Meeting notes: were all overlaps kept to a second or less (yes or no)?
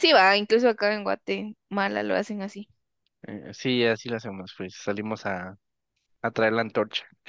yes